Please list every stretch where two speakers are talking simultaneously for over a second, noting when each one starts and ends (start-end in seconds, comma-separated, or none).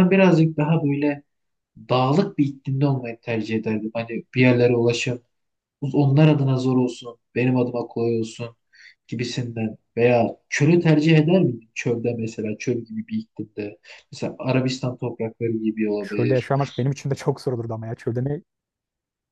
none